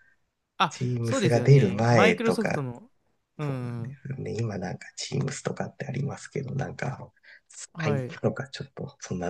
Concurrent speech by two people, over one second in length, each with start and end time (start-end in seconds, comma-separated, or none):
0.7-2.6